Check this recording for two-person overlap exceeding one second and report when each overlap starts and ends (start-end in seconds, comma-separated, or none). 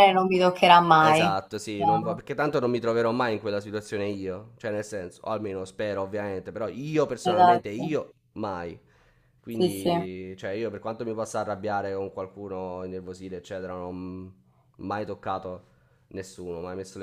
1.0-2.2